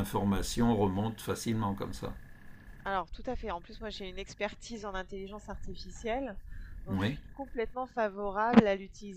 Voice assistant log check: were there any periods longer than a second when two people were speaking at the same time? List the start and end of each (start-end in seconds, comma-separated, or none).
none